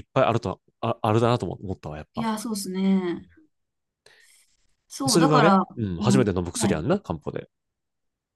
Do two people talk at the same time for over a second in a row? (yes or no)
yes